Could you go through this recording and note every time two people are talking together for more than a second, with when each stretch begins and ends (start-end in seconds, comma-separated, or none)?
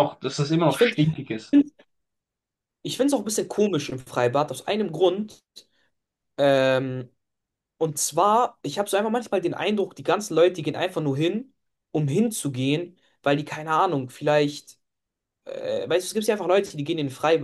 none